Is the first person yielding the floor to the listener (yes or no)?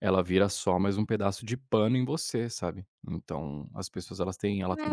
yes